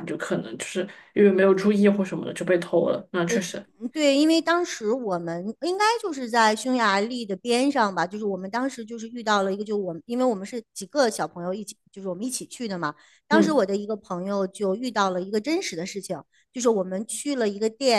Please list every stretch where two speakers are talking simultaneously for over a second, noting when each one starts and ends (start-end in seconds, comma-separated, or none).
none